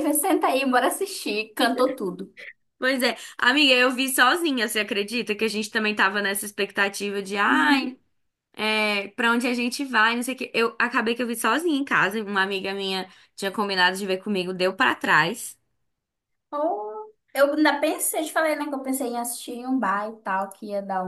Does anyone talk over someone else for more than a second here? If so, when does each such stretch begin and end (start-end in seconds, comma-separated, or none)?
none